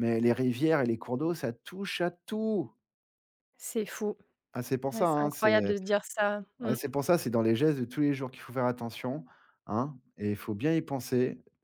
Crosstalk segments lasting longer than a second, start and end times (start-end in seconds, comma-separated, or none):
none